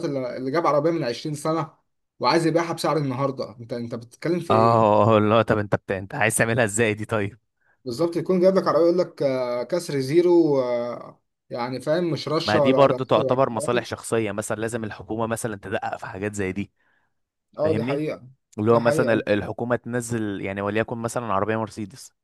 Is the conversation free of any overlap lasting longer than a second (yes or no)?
no